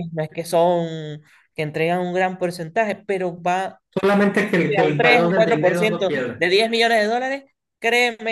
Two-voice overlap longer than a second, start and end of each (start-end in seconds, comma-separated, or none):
4.7-6.4